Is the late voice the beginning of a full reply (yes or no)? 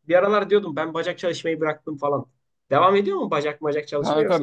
yes